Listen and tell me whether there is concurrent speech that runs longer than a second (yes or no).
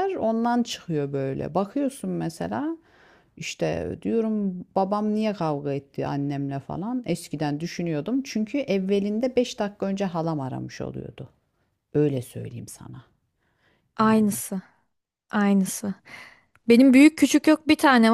no